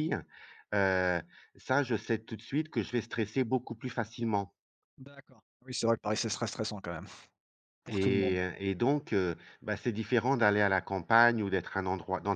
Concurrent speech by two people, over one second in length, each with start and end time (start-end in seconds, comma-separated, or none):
none